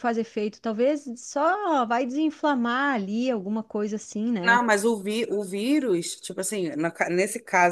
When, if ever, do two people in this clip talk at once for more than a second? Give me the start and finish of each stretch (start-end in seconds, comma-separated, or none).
none